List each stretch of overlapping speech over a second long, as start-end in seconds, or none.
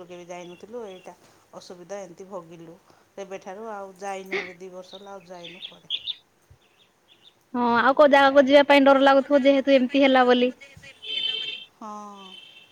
9.0-10.6